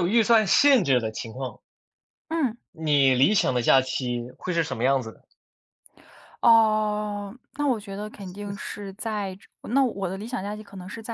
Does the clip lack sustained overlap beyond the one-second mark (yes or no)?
yes